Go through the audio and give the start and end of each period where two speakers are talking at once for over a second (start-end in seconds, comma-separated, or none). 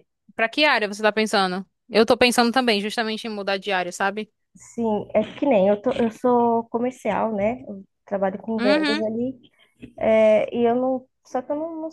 none